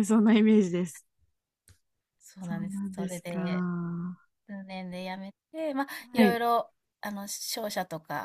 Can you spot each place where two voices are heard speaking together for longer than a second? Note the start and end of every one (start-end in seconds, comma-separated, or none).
2.4-3.6